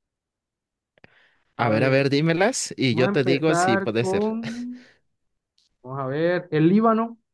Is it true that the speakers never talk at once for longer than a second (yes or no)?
no